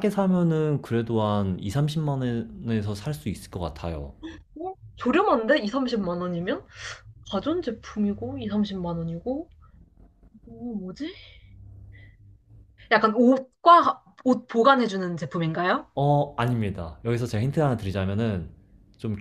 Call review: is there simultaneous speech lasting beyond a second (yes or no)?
no